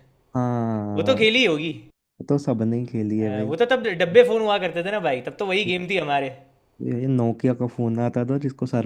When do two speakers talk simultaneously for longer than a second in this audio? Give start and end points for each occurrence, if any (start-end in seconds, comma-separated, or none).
none